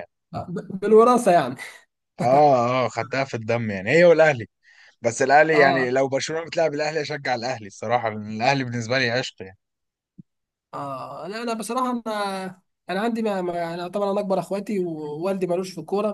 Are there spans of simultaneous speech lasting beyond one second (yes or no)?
no